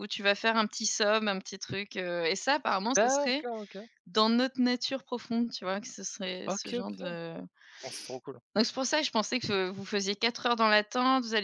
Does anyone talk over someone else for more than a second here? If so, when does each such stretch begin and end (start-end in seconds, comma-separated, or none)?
none